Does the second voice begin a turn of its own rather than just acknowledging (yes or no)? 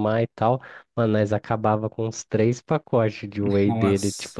no